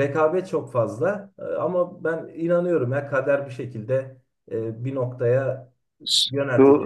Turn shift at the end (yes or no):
yes